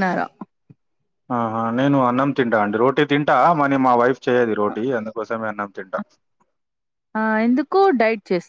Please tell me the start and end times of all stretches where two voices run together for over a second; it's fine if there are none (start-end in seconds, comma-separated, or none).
none